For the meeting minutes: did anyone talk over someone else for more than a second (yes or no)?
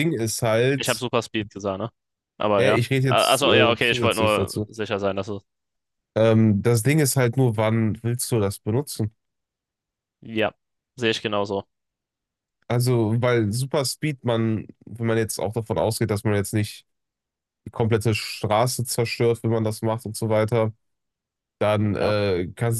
yes